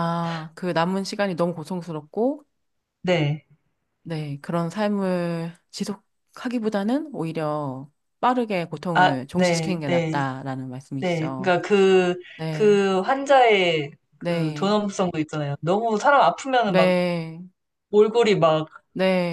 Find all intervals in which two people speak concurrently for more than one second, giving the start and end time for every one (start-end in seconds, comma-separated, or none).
8.9-10.2